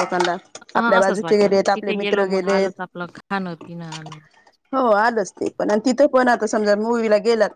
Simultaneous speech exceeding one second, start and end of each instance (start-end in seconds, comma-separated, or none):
0.8-2.7